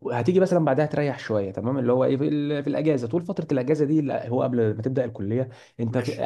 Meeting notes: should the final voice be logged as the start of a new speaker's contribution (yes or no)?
no